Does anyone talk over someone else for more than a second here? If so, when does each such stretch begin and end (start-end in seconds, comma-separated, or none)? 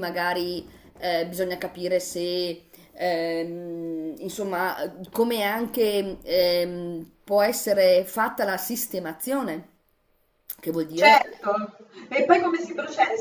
none